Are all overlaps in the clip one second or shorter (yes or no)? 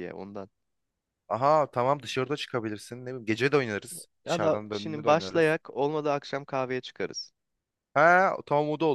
no